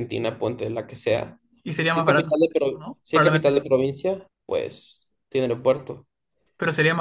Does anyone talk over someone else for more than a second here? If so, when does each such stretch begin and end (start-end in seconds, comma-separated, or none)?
1.9-3.5